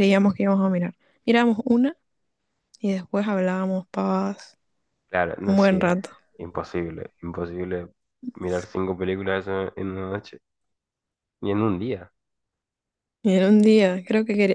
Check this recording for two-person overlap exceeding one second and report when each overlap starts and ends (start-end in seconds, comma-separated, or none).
none